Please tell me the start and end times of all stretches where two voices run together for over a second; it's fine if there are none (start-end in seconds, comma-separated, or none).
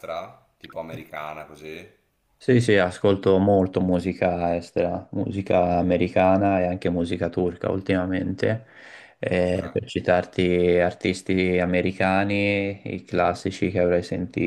none